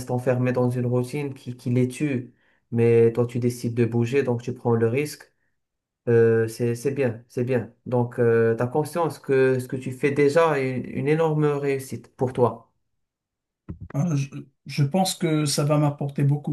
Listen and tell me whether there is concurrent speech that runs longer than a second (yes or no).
no